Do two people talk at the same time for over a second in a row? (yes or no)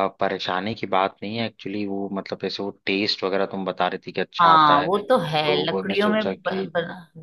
yes